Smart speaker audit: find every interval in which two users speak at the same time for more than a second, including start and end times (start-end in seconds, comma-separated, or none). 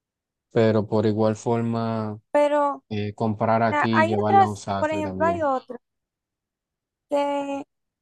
3.7-5.5